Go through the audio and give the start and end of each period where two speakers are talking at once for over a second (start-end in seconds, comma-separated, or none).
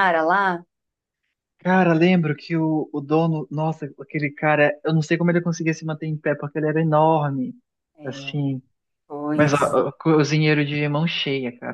none